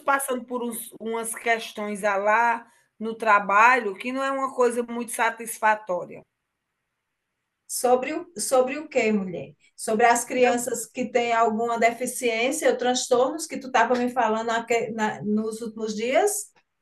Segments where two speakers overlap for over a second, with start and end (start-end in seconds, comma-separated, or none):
none